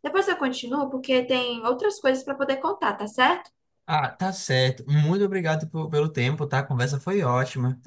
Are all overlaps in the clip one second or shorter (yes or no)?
yes